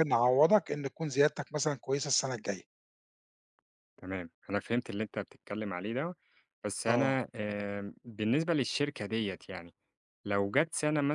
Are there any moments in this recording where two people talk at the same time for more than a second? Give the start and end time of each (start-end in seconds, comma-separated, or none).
none